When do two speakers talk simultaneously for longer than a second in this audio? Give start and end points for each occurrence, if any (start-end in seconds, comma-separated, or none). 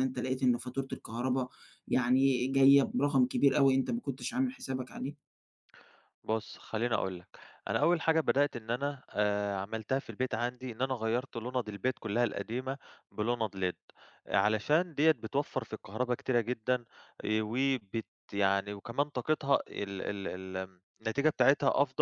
none